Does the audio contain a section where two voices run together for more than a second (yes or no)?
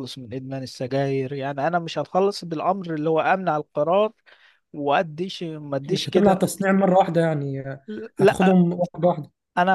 no